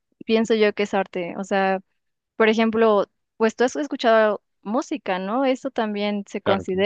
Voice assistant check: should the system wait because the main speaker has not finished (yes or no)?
yes